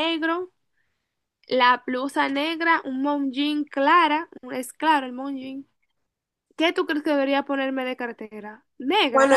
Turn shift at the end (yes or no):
yes